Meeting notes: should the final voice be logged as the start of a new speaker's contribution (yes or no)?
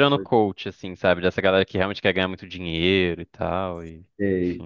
yes